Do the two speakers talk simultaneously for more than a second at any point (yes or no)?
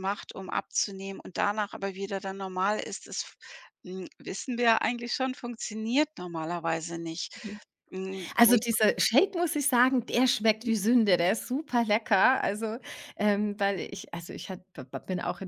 no